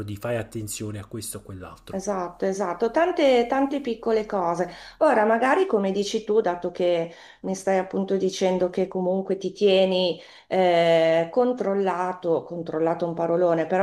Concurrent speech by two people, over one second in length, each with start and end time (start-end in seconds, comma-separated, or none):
none